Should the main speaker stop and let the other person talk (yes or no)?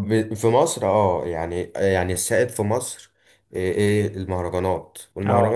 no